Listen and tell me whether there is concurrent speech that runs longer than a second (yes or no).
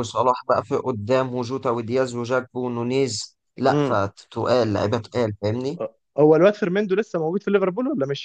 no